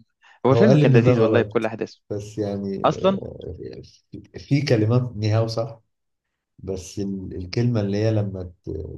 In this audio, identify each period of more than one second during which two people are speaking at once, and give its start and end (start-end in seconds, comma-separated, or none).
0.5-1.7